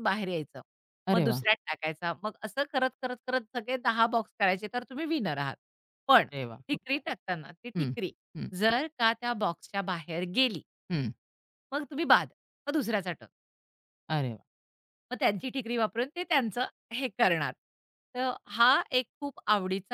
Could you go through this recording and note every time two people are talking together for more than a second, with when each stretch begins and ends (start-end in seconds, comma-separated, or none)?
none